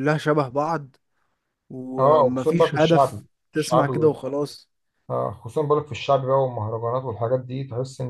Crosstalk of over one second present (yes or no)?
yes